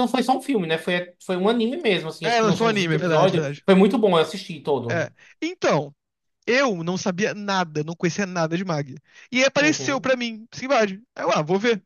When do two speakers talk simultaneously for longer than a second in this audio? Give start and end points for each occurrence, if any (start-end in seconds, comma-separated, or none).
2.2-3.6